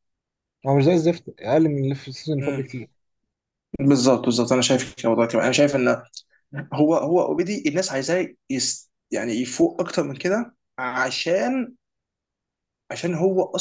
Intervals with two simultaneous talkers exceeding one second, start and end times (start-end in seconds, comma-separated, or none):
none